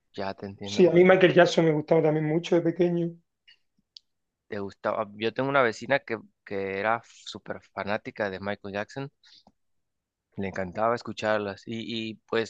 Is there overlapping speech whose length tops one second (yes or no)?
no